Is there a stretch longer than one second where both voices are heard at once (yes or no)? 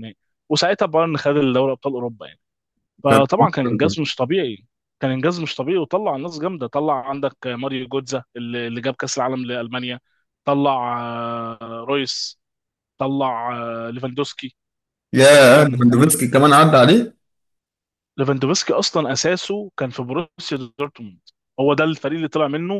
no